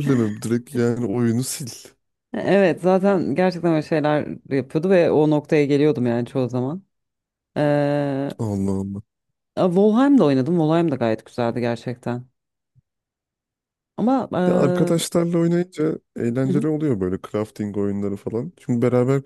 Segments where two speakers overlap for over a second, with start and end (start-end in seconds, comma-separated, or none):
none